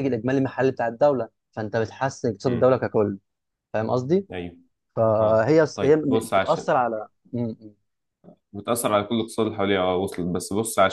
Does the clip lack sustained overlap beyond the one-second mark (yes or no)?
no